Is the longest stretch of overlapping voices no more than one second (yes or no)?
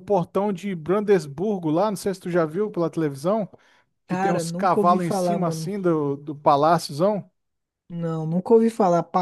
no